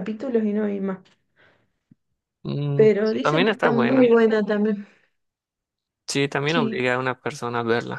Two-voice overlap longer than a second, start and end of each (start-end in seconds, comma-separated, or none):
2.8-4.1